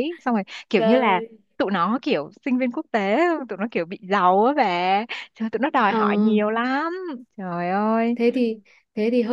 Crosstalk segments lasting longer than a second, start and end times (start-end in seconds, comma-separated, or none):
none